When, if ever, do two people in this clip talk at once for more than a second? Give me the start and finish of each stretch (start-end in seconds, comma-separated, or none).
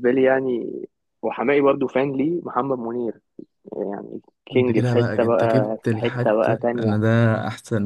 4.5-7.0